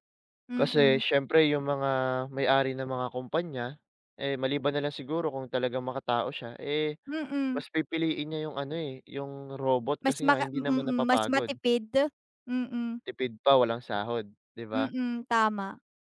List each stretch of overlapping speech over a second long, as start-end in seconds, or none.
10.0-11.5